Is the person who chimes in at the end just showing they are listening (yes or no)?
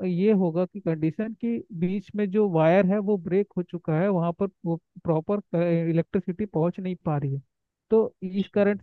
yes